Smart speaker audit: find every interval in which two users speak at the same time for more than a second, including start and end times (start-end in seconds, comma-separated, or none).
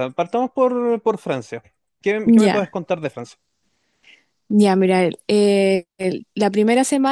none